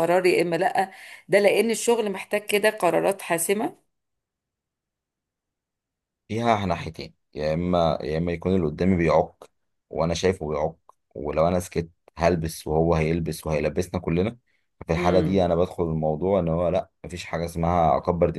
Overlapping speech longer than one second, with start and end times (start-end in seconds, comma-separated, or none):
none